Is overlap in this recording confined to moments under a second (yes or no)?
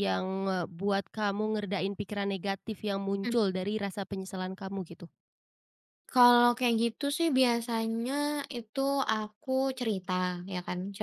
yes